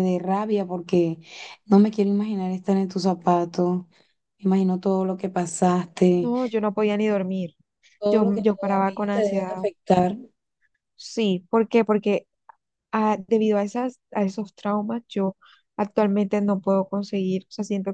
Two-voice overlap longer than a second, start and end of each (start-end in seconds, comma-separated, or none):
8.1-9.5